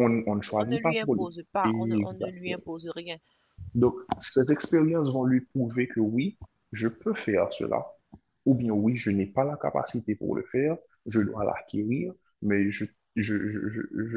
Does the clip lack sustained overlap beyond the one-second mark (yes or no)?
no